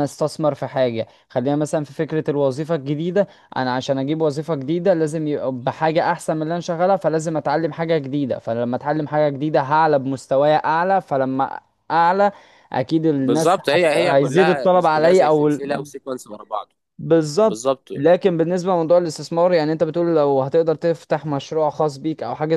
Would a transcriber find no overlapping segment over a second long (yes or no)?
no